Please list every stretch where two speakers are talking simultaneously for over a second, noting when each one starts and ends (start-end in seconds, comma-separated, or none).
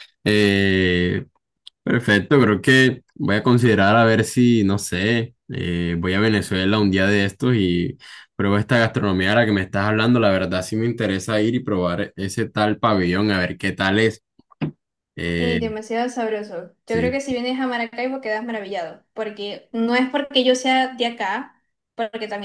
none